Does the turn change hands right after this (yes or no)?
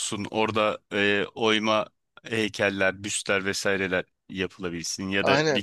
yes